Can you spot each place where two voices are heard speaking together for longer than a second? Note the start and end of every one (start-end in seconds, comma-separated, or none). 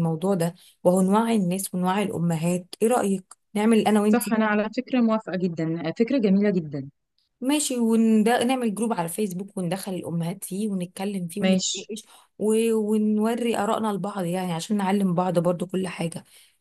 none